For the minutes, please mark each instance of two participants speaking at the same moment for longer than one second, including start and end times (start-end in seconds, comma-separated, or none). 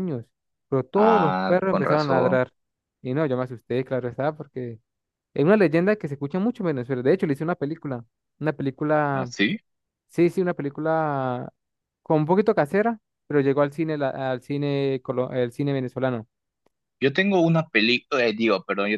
0.9-2.4